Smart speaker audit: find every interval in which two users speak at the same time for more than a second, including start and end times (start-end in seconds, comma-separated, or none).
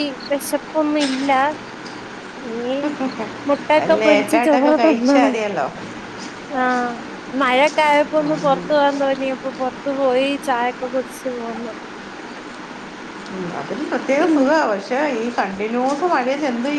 4.0-5.3